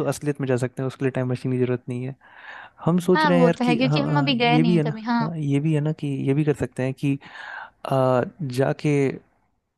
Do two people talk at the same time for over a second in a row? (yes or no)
yes